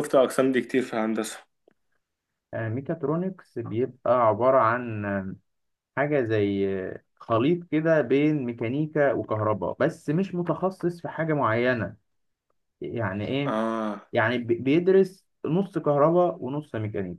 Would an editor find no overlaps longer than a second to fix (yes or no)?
yes